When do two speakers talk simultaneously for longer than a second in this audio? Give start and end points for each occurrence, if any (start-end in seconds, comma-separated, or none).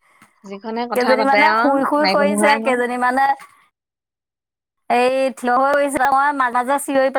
0.9-2.8